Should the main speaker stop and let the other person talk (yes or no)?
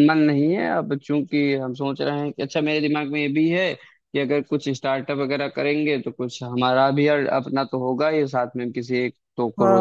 yes